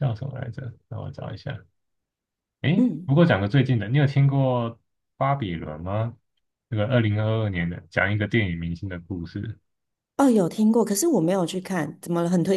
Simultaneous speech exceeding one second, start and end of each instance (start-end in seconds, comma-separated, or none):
none